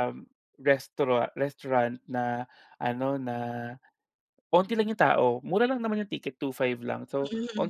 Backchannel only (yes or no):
yes